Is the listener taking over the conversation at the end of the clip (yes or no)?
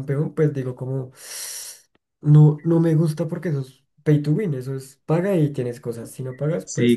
yes